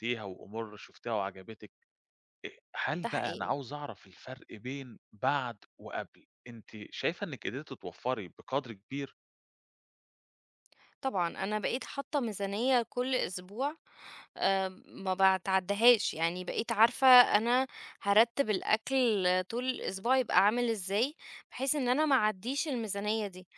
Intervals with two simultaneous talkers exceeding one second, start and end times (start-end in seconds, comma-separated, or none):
none